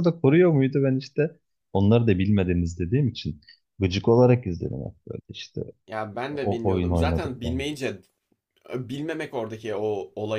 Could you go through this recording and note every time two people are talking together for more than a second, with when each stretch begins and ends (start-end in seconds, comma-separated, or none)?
6.3-7.7